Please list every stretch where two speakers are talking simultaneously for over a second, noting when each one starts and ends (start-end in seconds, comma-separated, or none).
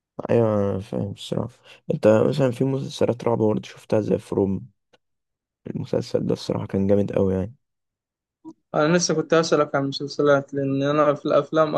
none